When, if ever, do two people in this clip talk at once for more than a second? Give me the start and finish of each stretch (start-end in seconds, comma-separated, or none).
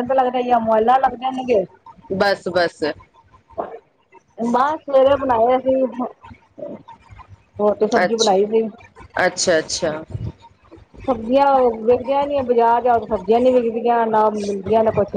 none